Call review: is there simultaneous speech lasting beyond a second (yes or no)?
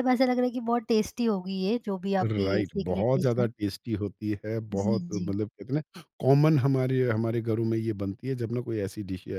yes